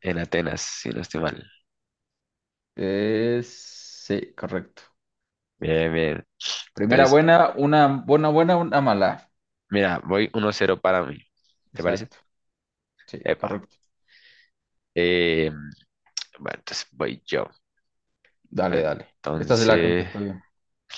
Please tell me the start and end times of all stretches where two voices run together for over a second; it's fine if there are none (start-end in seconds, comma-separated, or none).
18.7-20.1